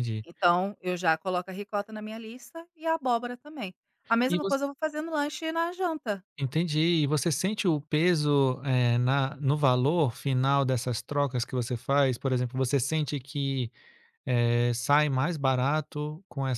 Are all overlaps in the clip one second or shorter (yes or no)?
yes